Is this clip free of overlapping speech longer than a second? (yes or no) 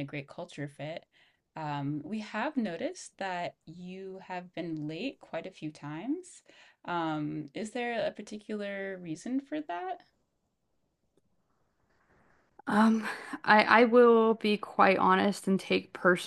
yes